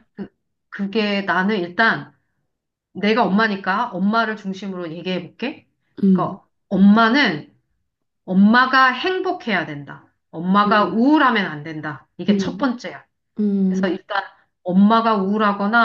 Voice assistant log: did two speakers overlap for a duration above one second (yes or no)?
no